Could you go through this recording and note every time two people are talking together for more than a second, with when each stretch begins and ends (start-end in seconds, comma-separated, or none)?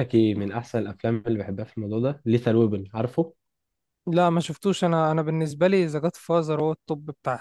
none